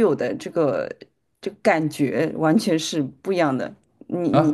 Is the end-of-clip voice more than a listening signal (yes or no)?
yes